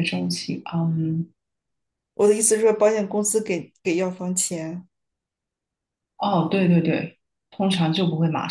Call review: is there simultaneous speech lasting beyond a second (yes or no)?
no